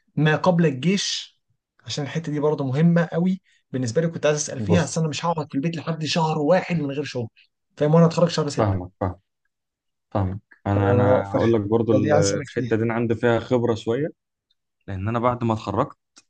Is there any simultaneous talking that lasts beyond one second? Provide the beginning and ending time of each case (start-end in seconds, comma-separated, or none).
11.3-12.8